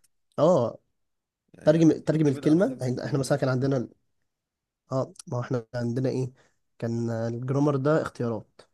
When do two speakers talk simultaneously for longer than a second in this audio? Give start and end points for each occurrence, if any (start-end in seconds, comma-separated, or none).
1.6-3.4